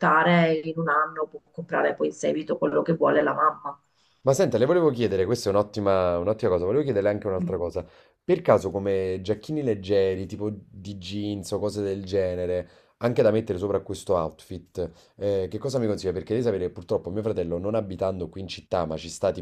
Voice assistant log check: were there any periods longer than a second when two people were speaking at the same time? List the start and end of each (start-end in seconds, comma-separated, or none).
none